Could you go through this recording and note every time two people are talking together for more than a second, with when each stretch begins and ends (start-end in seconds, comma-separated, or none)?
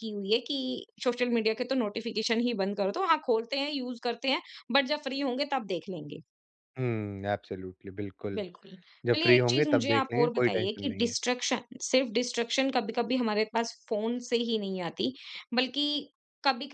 9.2-11.1